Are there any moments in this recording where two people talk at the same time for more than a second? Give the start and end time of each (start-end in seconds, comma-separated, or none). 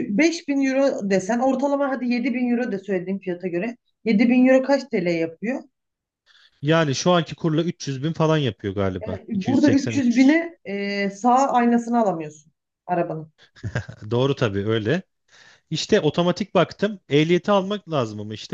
9.0-10.4